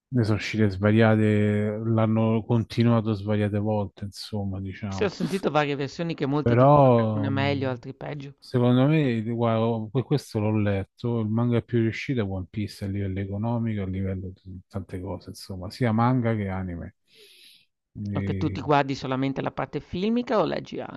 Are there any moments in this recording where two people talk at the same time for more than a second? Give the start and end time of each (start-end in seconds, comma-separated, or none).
6.4-7.8